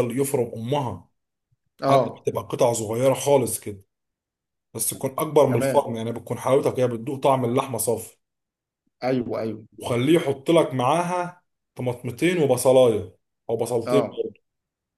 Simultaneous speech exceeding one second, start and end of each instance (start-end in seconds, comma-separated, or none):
none